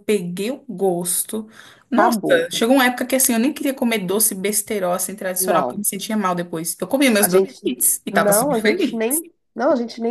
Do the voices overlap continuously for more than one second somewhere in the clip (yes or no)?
yes